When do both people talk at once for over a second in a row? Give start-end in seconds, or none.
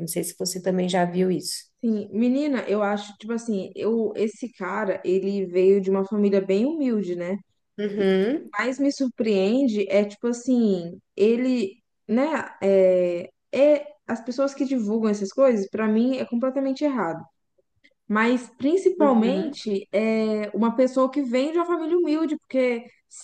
none